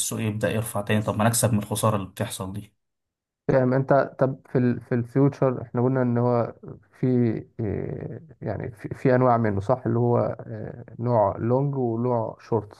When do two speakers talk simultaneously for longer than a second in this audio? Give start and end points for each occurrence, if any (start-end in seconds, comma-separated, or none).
none